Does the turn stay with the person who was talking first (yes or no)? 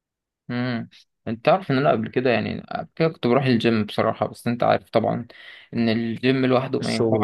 no